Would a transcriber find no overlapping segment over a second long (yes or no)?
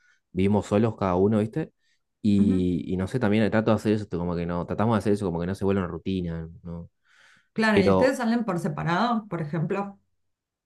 yes